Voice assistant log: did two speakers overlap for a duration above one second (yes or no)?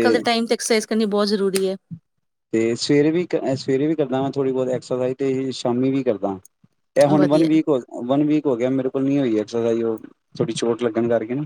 no